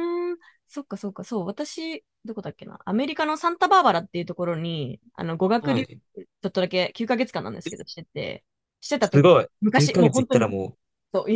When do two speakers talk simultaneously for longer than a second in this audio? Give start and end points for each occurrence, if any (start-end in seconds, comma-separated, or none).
9.0-10.6